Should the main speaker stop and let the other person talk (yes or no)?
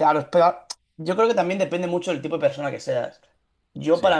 no